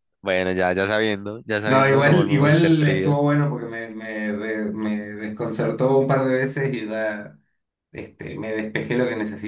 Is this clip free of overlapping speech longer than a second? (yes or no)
no